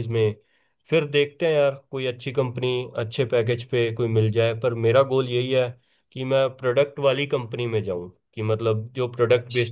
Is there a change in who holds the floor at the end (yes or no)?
no